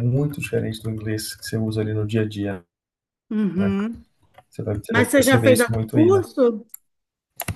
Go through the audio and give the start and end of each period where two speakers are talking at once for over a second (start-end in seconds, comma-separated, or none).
4.9-6.3